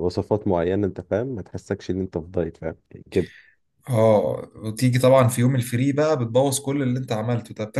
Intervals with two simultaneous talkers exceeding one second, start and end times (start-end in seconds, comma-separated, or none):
none